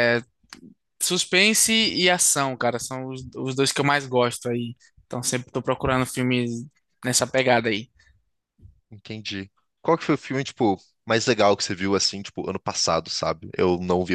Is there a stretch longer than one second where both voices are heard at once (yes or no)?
no